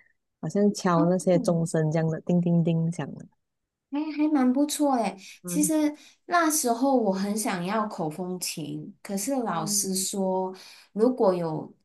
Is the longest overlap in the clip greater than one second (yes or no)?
no